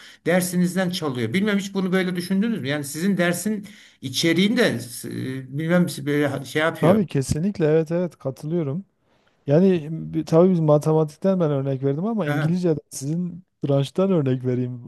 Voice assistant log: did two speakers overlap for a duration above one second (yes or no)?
no